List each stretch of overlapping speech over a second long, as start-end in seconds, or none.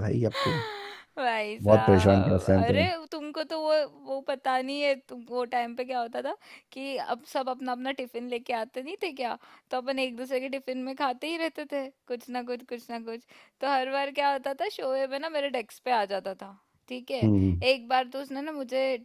1.6-2.8